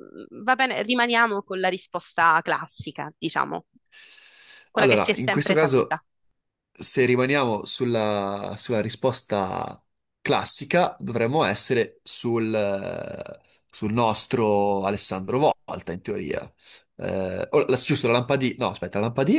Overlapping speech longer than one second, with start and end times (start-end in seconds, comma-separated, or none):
4.7-6.0